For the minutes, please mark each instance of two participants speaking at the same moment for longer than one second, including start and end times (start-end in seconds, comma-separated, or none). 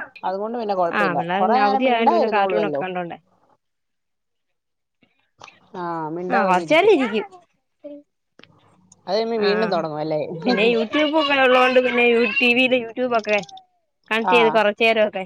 1.0-2.8